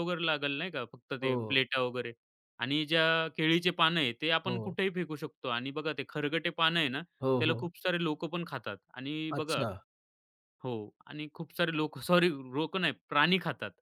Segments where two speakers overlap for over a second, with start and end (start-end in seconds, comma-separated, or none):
none